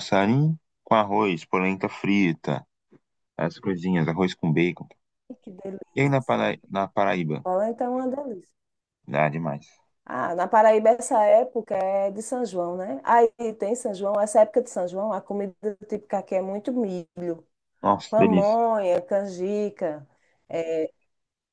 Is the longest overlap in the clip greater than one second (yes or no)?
no